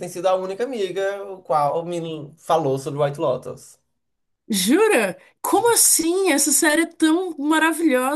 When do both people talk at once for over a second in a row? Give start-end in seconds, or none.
none